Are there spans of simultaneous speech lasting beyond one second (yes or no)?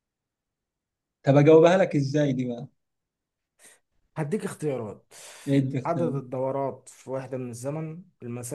no